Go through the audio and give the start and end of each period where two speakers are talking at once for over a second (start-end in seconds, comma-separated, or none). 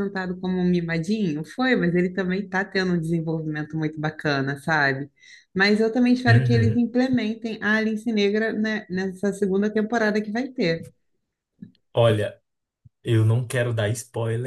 none